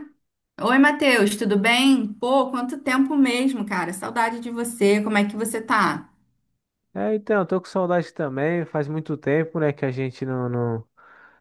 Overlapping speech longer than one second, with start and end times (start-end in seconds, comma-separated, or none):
none